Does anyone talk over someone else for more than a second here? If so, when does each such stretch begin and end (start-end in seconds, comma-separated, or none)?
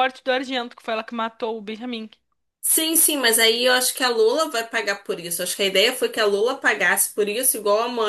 none